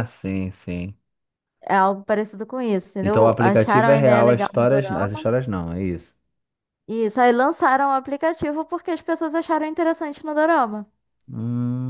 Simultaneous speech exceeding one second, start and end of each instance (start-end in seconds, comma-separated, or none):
3.0-5.2